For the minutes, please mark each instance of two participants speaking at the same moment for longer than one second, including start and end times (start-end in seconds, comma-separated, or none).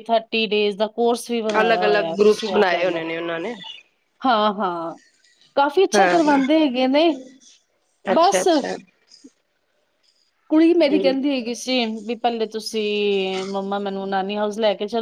1.6-3.0